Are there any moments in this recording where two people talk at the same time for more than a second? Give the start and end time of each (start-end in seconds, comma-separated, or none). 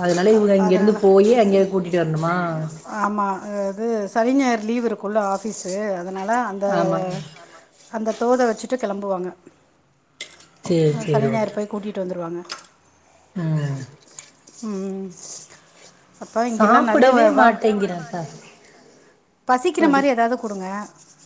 16.6-18.2